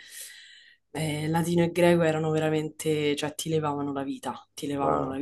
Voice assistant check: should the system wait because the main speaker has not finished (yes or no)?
yes